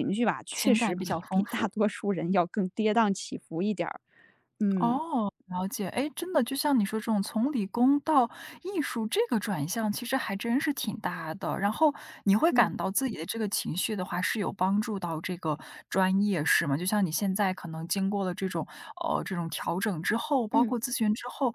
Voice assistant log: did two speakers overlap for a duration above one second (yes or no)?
yes